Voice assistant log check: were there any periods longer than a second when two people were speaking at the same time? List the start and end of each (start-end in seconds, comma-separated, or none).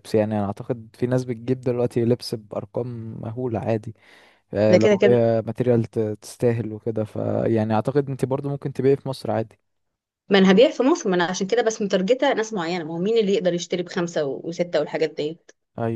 none